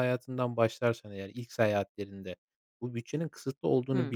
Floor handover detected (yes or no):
no